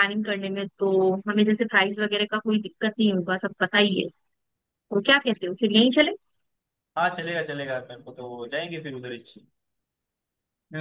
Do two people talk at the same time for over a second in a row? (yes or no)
no